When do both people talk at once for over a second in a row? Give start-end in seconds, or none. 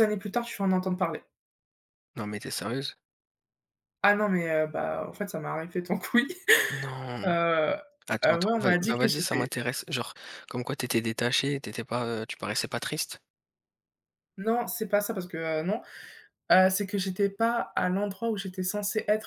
8.2-9.5